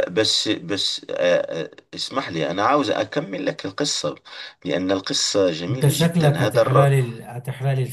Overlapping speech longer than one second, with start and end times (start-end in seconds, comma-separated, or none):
5.7-6.9